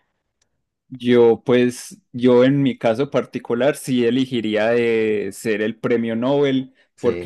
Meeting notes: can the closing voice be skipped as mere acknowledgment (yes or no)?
yes